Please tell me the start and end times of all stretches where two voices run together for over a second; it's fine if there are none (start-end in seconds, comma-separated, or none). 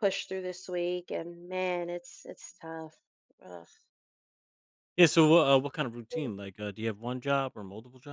none